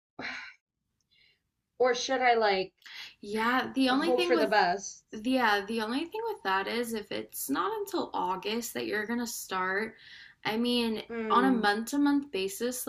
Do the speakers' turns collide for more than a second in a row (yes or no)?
no